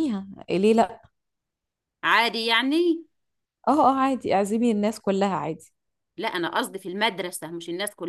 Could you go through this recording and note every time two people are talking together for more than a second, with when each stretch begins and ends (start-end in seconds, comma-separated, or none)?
none